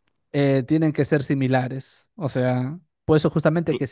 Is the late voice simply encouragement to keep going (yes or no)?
yes